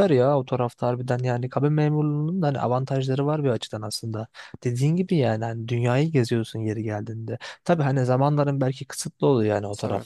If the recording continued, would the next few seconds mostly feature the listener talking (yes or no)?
no